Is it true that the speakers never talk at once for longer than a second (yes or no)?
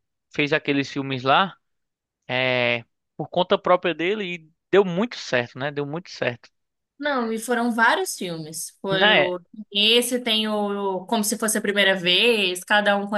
yes